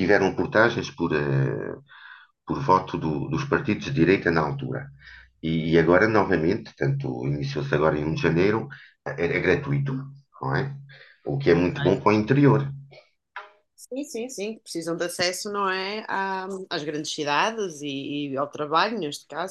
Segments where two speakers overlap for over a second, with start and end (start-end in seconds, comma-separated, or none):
none